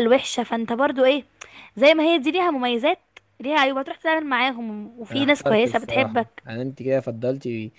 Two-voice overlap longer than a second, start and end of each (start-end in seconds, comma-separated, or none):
5.1-6.4